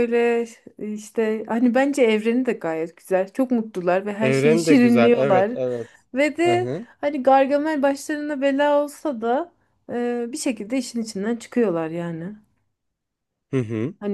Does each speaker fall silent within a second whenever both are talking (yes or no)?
no